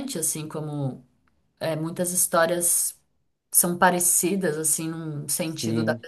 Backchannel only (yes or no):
yes